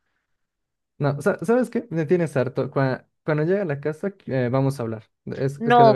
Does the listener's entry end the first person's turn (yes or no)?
yes